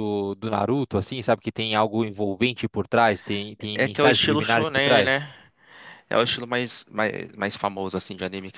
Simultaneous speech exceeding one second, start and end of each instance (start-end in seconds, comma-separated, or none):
3.7-5.1